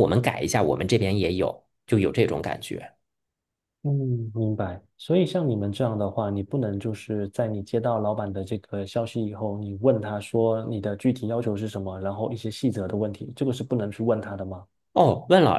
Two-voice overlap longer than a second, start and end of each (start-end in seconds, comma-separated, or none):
none